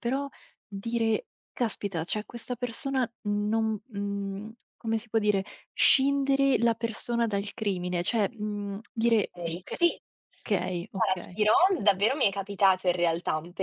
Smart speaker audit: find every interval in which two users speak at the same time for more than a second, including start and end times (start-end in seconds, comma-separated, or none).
none